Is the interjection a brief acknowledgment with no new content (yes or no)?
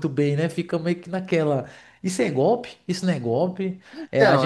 yes